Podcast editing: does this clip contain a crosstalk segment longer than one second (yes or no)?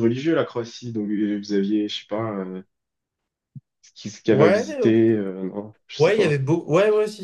no